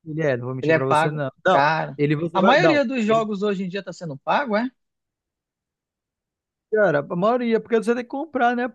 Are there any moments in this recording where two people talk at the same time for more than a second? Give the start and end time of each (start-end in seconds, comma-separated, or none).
0.6-3.2